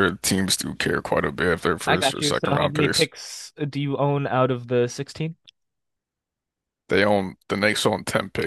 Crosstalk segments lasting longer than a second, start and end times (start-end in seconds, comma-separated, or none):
1.9-3.1